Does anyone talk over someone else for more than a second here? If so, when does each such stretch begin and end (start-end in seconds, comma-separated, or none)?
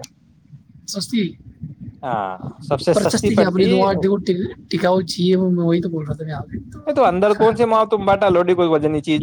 2.9-4.3